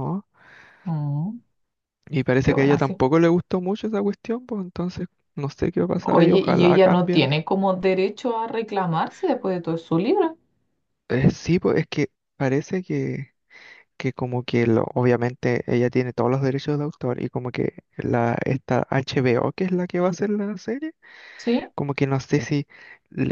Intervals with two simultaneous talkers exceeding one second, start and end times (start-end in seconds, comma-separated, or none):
6.0-7.3